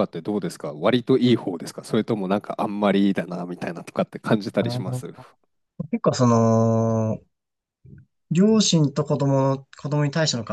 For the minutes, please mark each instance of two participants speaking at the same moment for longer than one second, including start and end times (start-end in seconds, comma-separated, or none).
none